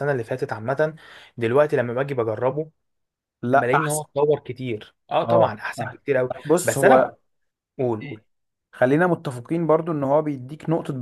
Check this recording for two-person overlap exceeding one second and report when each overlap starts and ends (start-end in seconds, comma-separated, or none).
5.2-7.1